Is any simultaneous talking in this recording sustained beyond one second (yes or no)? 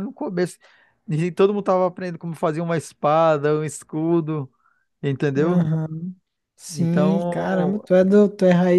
yes